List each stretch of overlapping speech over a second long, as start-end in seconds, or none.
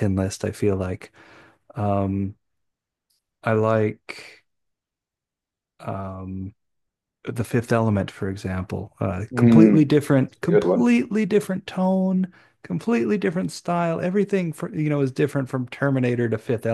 9.3-10.9